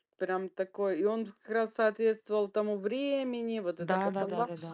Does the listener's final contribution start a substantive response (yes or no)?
no